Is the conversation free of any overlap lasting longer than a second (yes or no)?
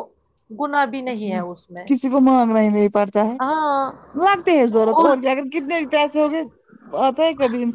yes